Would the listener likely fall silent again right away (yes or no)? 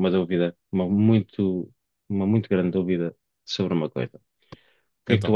yes